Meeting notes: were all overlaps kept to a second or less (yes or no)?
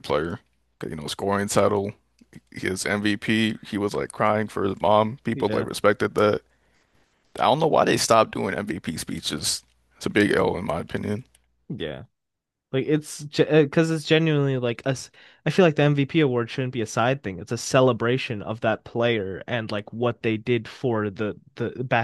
yes